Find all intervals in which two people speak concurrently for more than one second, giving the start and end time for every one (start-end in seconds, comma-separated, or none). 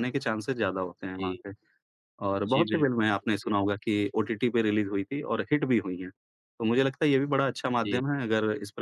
2.5-3.7